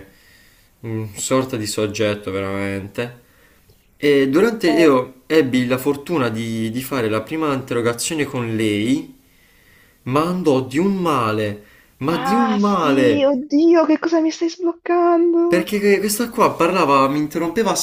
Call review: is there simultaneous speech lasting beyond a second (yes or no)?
yes